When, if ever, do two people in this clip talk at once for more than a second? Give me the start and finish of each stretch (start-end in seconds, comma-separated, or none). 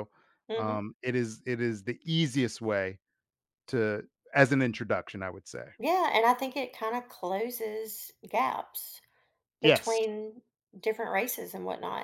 none